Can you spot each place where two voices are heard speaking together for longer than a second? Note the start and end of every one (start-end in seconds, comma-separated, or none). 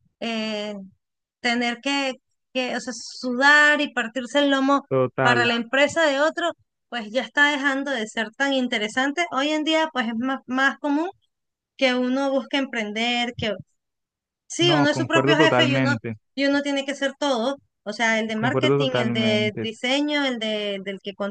14.6-15.9, 18.4-19.7